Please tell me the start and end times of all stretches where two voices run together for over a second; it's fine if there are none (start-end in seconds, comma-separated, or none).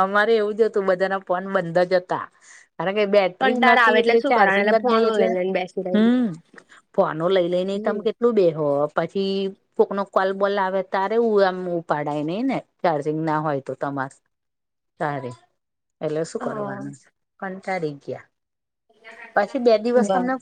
3.4-5.3